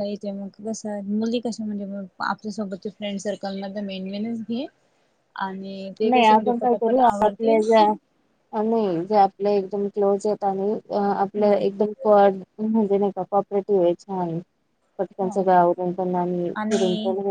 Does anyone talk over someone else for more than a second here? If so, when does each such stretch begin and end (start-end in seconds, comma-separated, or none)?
6.1-7.6